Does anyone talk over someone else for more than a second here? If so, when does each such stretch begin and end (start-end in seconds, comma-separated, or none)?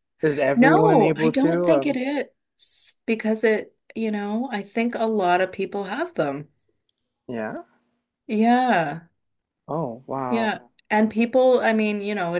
0.5-2.0